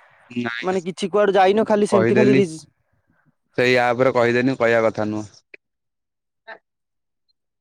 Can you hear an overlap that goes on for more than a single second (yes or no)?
yes